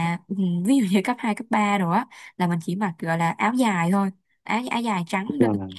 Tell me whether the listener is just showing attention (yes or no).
yes